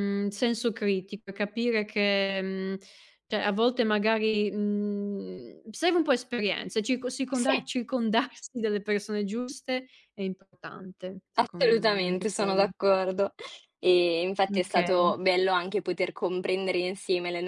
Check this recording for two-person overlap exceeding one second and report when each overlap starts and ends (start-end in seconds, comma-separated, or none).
11.3-12.7